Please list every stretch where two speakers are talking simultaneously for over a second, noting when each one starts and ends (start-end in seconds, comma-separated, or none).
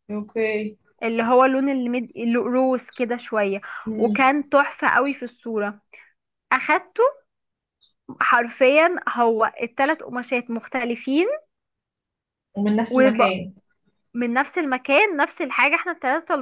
none